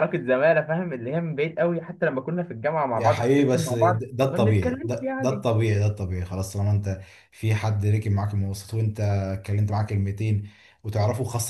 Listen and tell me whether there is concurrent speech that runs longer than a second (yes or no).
yes